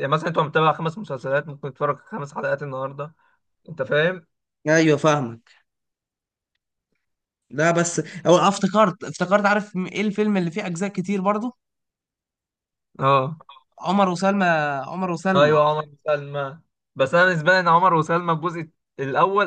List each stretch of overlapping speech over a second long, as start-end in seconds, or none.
none